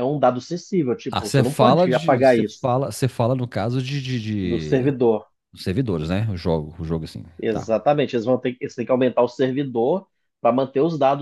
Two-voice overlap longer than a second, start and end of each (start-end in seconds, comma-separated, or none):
1.1-2.7